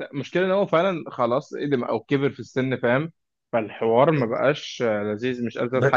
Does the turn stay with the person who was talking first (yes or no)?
no